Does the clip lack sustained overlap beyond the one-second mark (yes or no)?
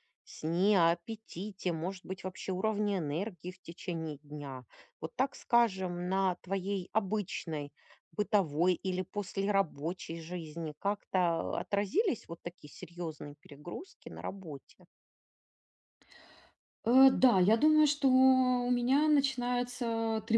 yes